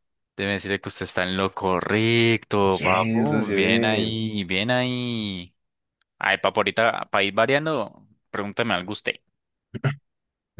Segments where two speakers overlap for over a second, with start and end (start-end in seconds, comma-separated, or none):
2.7-4.2